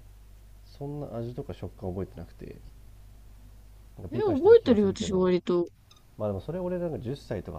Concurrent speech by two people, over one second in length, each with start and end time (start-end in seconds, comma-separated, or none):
4.1-5.3